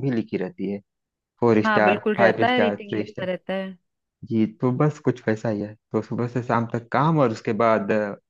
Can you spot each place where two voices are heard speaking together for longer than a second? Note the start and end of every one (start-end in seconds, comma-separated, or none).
1.6-3.3